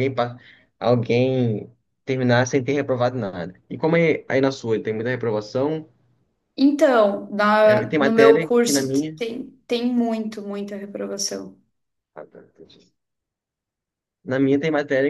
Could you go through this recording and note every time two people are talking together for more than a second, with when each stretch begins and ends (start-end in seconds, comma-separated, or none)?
7.6-9.2